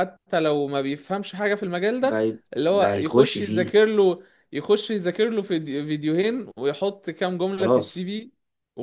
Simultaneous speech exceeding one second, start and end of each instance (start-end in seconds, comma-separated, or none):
2.0-3.7